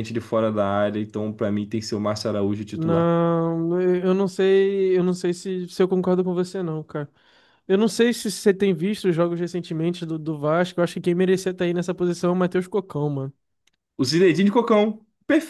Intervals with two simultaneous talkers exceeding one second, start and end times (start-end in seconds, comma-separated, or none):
none